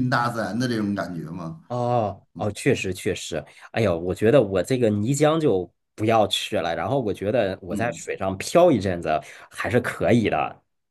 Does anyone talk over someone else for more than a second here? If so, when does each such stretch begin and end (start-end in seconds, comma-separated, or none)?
none